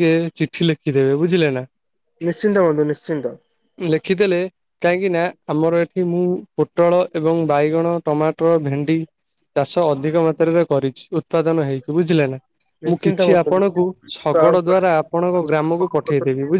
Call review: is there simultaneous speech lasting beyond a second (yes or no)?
yes